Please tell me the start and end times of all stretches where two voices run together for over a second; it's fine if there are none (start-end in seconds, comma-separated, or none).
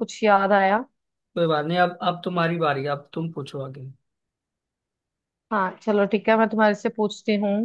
none